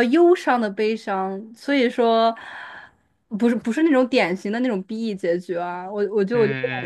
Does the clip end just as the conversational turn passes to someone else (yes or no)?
yes